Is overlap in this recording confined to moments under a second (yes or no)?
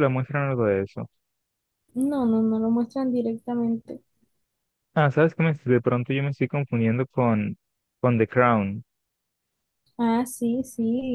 yes